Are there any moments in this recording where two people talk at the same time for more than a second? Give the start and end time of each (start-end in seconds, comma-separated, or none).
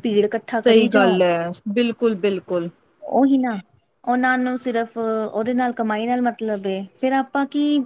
none